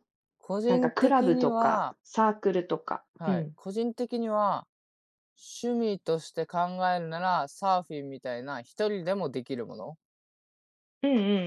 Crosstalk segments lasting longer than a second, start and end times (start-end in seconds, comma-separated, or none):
0.7-2.0